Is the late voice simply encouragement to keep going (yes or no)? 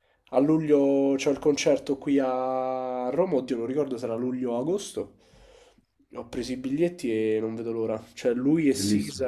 yes